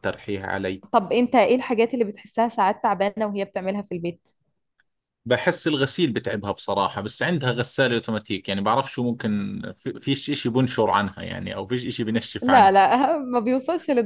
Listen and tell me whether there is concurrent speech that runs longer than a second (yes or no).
no